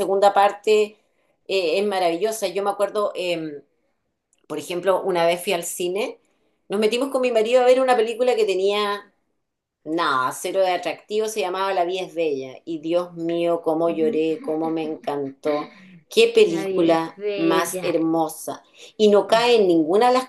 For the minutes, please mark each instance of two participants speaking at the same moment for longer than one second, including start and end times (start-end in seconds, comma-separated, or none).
16.3-17.9